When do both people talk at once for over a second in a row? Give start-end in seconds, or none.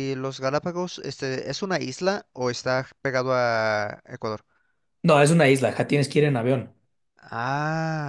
none